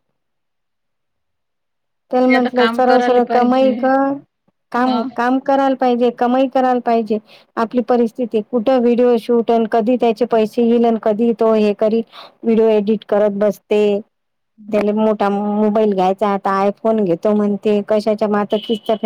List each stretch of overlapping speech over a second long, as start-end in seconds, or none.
2.1-3.7